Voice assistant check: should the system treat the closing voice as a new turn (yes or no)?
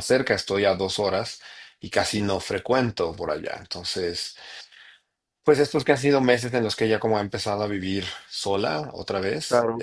yes